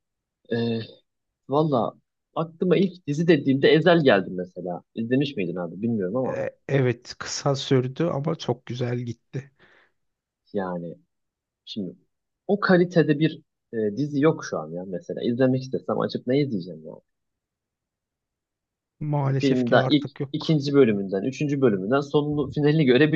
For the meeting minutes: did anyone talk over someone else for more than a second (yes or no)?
yes